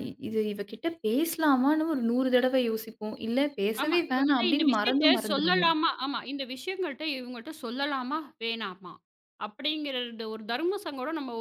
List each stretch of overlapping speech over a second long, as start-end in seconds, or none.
3.8-5.7